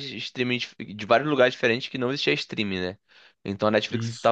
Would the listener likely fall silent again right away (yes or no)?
yes